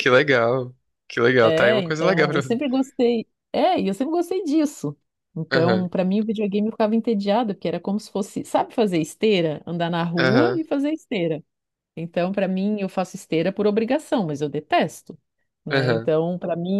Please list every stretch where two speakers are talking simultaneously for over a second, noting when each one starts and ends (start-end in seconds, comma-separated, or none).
1.4-2.6